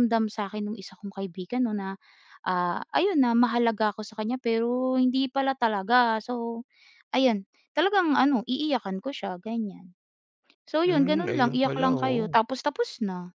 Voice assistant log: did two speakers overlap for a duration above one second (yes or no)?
yes